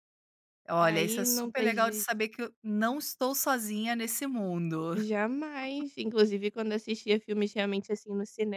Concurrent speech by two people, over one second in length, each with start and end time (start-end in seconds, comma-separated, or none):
0.8-2.1